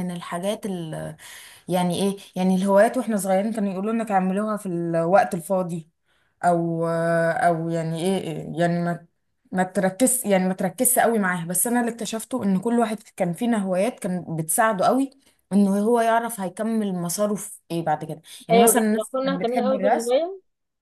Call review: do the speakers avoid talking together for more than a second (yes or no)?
no